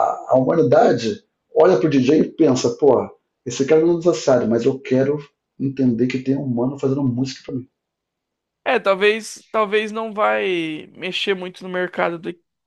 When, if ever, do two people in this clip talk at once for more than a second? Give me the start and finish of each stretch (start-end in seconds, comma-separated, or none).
none